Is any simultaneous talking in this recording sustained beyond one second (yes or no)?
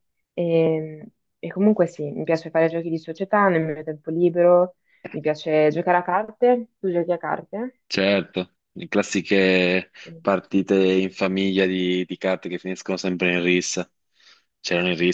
no